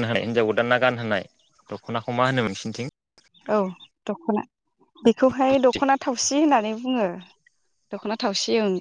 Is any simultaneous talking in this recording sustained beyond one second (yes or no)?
no